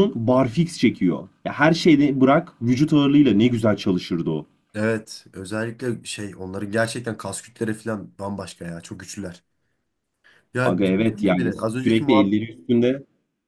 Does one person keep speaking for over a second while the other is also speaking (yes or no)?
yes